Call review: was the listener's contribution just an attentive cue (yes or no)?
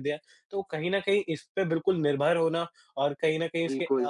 yes